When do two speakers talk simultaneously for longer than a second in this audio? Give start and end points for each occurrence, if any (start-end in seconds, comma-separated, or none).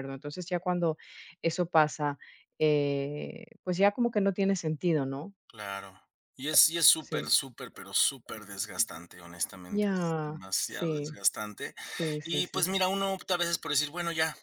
9.7-11.2